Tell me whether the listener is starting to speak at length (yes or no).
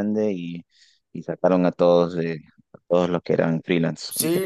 yes